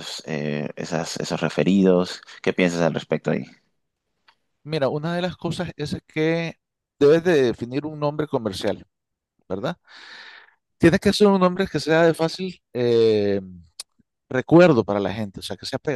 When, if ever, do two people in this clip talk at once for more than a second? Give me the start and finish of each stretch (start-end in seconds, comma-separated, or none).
none